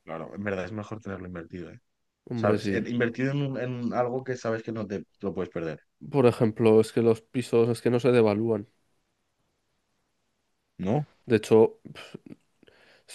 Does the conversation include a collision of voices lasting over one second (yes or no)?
no